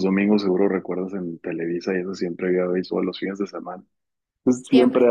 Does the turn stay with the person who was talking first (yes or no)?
yes